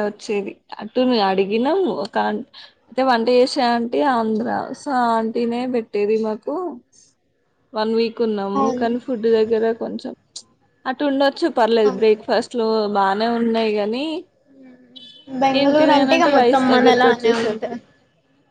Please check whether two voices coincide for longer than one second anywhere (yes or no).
yes